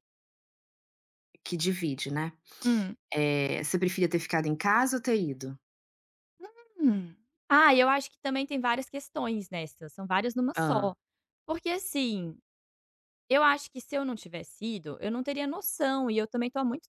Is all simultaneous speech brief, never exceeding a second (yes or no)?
yes